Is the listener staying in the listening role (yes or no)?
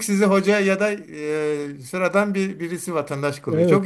no